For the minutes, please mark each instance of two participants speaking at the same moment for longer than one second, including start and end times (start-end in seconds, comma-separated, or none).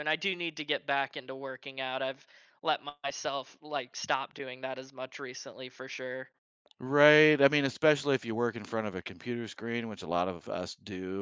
none